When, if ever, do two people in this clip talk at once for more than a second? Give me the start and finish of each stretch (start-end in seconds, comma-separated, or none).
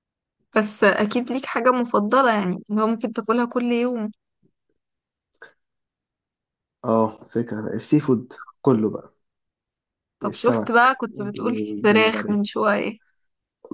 10.2-12.4